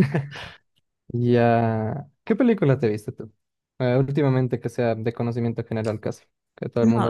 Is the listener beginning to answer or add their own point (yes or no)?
yes